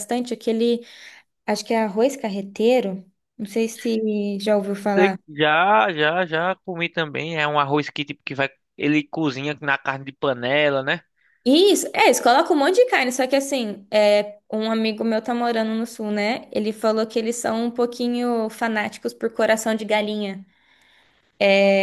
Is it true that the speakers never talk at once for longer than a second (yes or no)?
yes